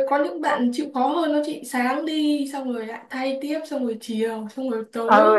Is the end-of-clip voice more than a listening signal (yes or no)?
yes